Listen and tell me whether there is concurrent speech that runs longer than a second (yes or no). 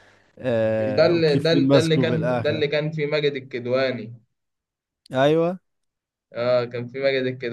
yes